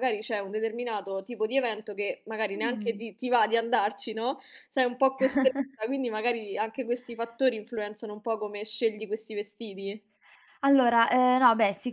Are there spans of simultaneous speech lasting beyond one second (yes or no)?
no